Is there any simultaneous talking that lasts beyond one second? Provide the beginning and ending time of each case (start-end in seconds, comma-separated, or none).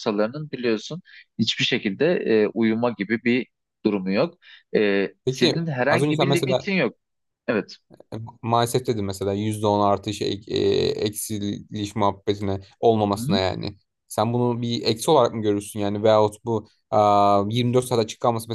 5.2-6.7